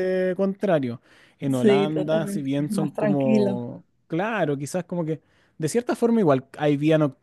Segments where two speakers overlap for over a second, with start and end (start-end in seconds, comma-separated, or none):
1.5-3.6